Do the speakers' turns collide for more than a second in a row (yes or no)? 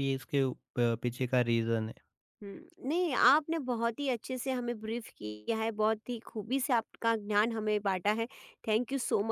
no